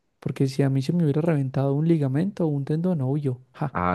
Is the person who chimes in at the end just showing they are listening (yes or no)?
no